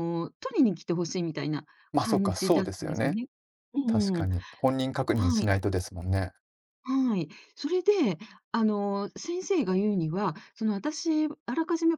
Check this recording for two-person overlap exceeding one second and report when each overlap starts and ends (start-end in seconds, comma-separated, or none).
1.9-3.2